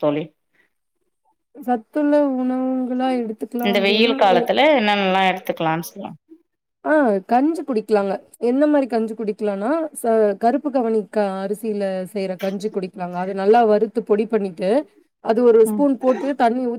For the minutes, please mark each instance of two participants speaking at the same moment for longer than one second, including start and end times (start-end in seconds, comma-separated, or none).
none